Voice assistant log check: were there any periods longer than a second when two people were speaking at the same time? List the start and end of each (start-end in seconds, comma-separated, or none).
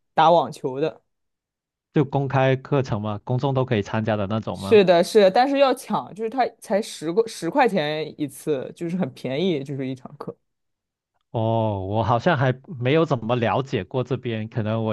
none